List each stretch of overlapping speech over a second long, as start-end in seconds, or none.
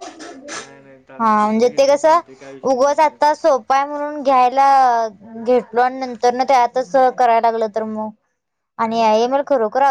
none